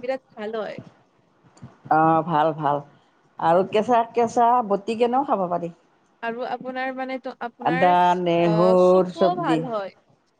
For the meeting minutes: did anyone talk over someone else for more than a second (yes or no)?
yes